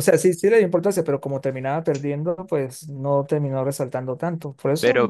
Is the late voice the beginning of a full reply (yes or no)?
yes